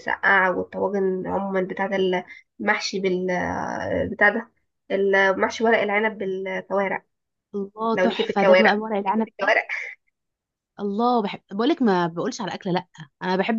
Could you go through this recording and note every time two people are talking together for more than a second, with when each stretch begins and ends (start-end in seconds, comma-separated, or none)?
7.9-9.6